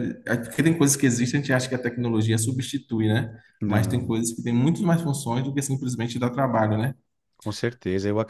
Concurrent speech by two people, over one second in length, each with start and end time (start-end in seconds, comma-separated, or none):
none